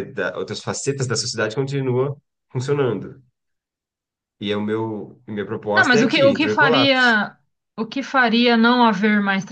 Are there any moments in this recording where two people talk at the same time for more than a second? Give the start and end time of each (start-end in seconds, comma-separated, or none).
5.7-7.1